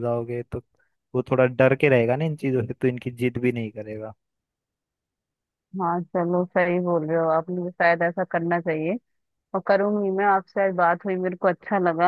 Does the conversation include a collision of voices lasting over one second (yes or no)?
no